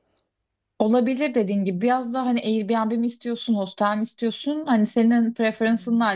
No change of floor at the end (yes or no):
yes